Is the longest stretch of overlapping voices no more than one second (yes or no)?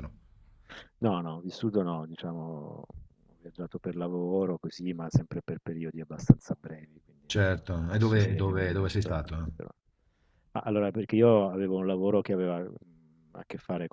no